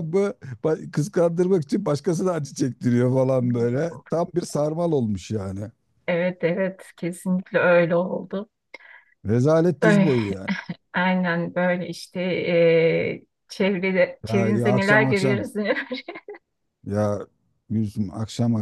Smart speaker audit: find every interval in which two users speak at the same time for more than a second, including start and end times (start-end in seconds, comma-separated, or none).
14.3-15.5